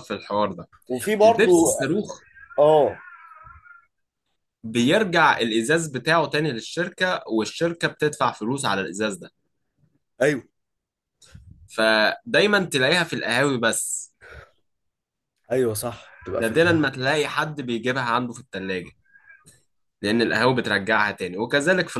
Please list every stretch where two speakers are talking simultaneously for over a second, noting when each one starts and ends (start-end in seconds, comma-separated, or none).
none